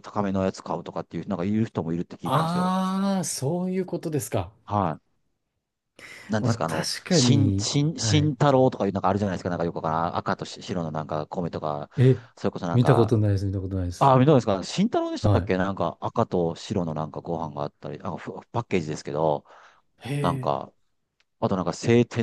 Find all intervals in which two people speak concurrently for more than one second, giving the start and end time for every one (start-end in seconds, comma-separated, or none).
6.4-8.3